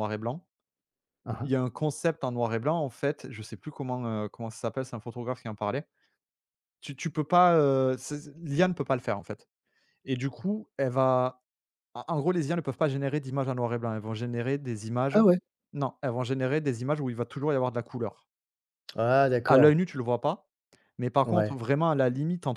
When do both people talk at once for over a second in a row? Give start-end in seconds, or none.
none